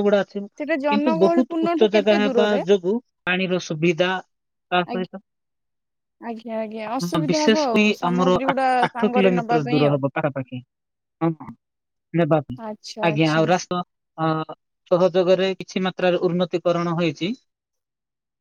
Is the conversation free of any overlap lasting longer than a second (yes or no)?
no